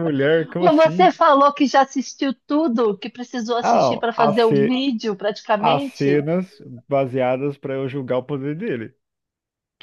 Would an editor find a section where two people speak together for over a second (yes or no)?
yes